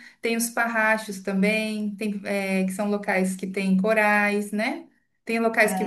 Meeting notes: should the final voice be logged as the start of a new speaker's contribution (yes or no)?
no